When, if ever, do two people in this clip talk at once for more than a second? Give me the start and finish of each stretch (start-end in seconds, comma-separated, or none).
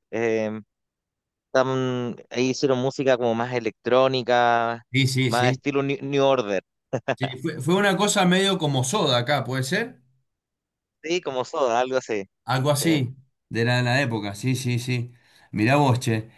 none